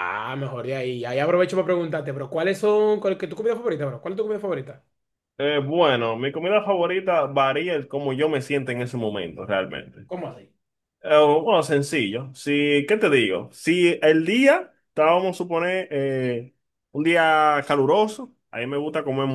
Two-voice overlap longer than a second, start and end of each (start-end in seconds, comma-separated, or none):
none